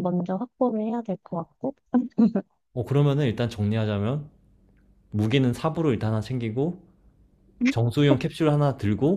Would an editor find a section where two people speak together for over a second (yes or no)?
no